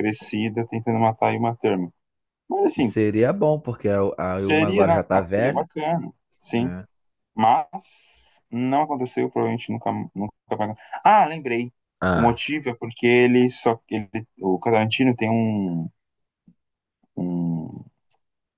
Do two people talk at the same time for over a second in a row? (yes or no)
yes